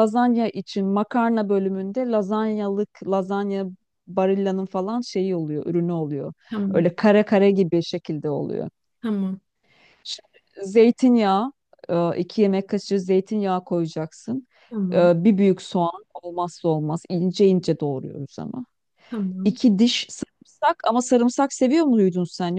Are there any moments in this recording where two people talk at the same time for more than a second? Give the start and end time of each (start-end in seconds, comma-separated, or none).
none